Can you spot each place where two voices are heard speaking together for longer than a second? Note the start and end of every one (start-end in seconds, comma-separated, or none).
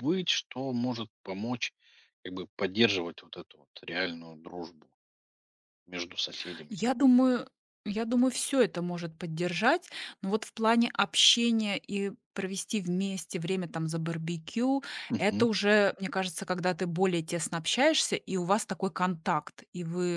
none